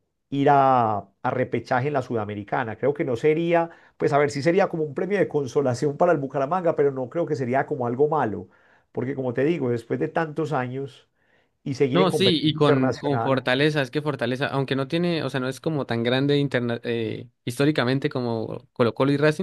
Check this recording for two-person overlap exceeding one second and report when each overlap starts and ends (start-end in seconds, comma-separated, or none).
11.9-13.5